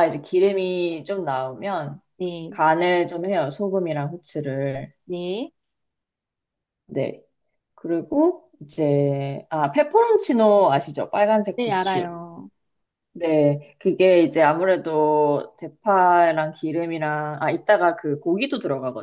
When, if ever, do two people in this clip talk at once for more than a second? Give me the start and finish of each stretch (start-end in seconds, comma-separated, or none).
none